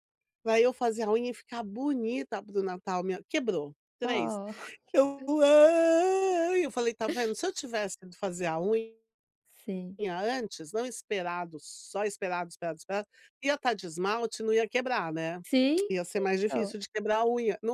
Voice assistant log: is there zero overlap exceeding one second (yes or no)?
yes